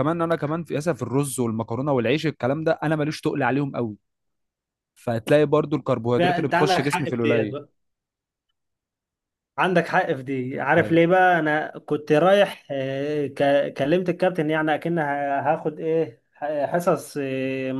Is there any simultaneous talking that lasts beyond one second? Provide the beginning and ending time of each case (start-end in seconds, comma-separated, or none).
6.2-7.6